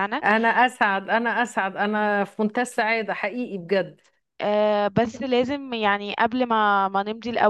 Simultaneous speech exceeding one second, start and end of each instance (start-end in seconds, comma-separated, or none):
none